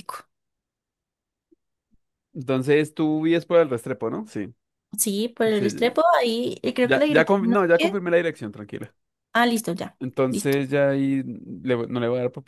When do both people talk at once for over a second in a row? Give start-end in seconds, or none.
6.8-8.0